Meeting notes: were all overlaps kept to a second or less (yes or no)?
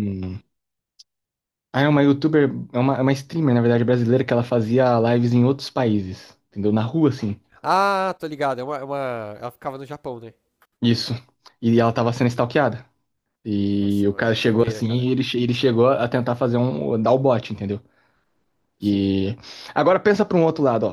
no